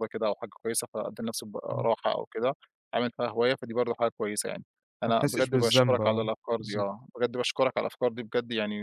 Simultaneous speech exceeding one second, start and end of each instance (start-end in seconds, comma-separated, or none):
5.0-6.9